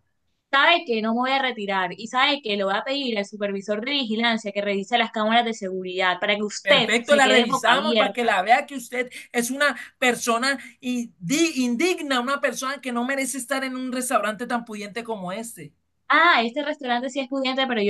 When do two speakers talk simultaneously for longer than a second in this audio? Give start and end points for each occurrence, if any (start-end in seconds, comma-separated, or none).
6.6-8.3